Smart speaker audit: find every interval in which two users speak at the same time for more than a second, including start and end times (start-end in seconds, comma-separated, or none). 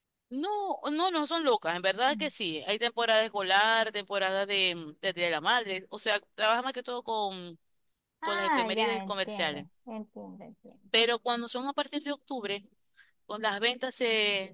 8.2-9.7